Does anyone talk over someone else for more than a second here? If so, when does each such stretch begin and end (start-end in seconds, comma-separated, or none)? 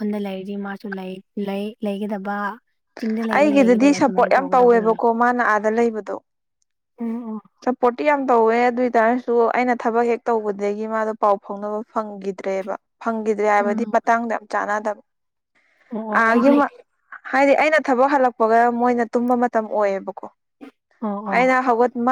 3.4-5.0